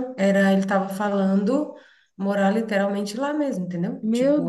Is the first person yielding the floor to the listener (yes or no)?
yes